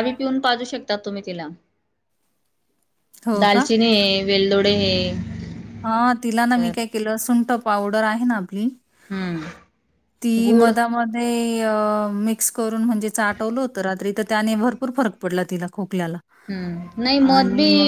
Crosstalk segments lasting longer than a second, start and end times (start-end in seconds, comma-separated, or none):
none